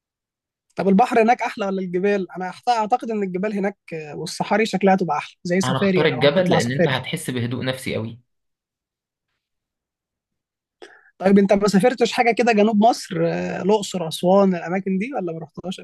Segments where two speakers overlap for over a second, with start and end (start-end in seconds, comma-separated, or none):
5.6-7.0